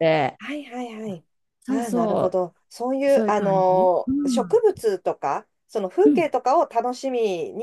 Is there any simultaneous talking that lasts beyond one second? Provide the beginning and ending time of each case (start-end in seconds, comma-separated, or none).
3.1-4.6